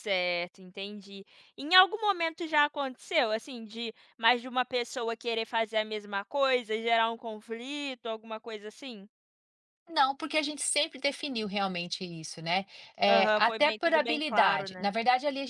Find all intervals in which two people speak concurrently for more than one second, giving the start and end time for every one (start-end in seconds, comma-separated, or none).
13.1-14.9